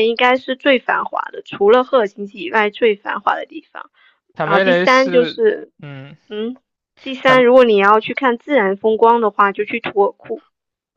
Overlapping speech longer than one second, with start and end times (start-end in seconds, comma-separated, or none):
4.4-5.7